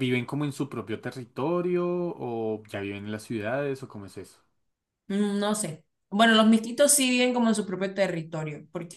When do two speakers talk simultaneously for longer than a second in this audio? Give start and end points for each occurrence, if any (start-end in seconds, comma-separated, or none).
none